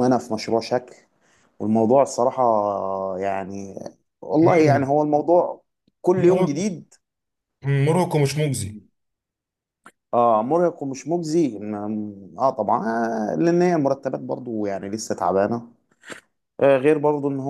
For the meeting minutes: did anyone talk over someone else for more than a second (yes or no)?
no